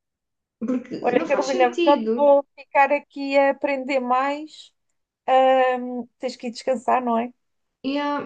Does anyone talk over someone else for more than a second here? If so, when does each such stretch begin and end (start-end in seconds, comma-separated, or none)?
1.0-2.4